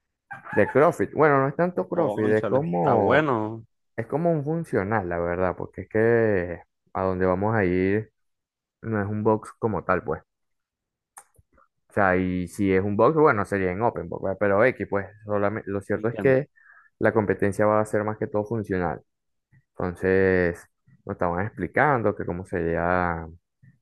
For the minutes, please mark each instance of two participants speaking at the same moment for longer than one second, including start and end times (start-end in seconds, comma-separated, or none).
1.9-3.3